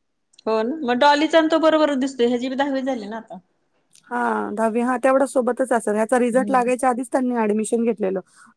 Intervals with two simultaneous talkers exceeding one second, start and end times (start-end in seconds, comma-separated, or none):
none